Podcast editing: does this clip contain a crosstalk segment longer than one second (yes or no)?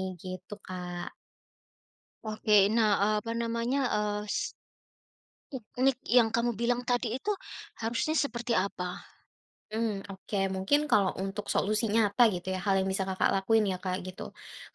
no